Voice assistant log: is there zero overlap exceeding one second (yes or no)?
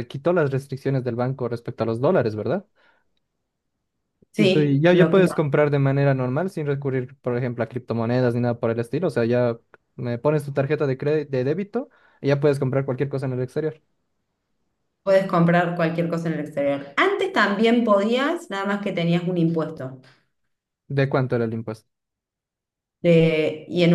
no